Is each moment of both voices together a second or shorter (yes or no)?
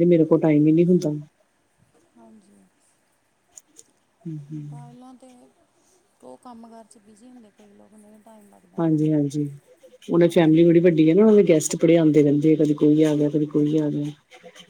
yes